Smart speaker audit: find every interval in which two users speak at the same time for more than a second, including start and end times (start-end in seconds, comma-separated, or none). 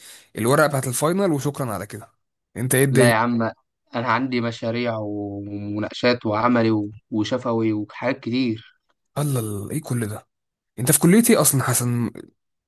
none